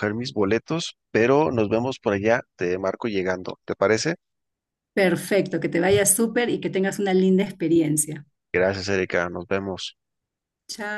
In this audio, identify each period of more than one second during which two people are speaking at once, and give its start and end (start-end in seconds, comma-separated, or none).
none